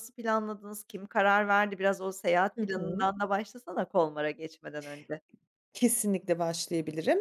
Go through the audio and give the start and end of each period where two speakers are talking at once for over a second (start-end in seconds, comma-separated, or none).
none